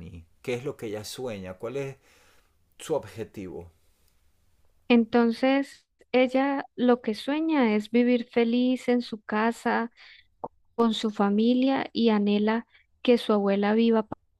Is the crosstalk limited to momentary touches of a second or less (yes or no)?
yes